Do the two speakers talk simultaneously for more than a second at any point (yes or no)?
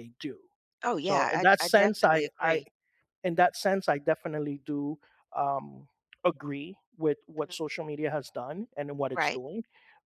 yes